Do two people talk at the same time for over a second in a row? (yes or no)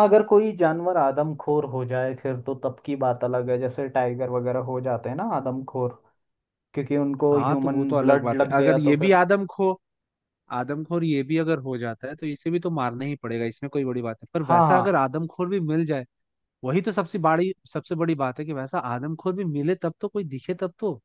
yes